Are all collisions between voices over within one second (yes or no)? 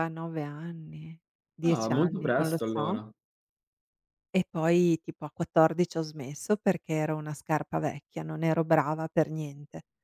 no